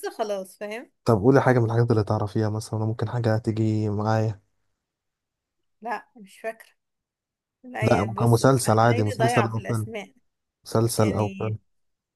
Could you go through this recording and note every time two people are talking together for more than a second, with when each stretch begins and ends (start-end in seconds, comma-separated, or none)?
7.8-9.9